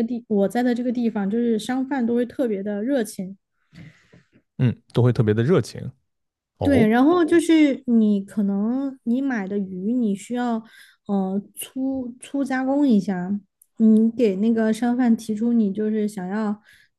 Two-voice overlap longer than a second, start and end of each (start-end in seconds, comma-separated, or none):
none